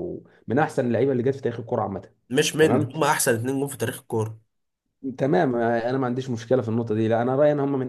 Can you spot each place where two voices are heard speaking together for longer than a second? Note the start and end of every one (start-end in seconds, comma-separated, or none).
none